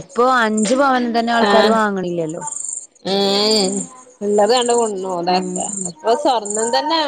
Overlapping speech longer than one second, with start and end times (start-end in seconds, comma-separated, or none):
none